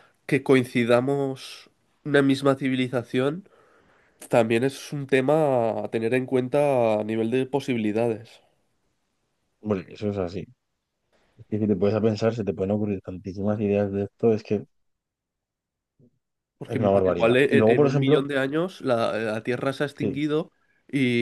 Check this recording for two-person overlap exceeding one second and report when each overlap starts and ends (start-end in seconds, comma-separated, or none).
16.8-18.3